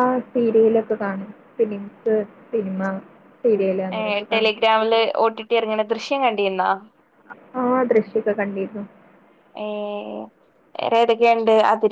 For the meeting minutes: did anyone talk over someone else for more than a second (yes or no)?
no